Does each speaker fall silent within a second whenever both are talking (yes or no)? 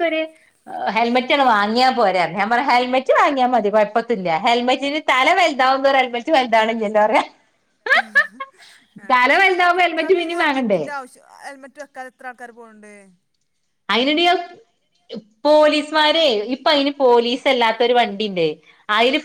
no